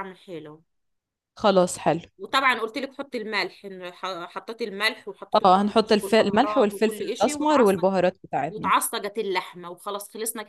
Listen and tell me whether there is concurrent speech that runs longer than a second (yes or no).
yes